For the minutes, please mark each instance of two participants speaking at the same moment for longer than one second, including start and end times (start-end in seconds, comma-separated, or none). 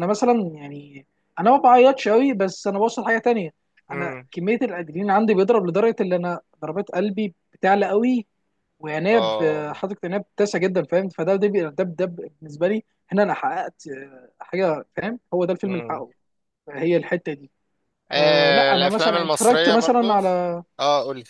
18.2-20.2